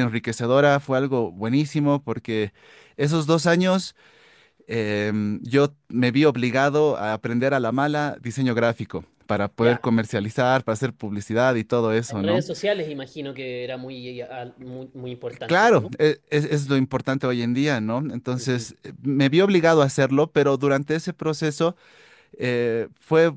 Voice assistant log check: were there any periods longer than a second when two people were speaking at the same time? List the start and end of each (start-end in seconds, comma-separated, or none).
none